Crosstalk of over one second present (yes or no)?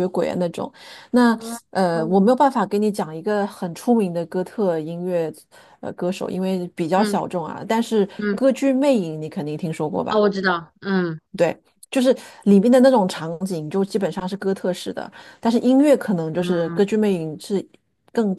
no